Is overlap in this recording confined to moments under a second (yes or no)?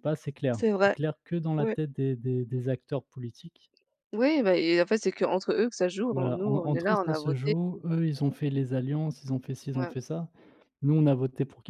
no